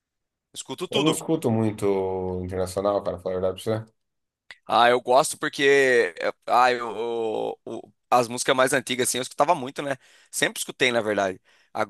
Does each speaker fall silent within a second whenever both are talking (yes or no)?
yes